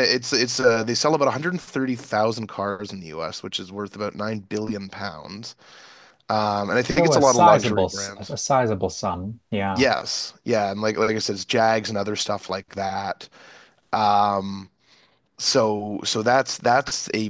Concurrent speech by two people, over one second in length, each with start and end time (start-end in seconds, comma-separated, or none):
7.0-8.4